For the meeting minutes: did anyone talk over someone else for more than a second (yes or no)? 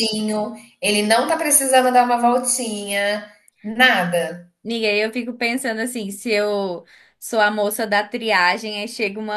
no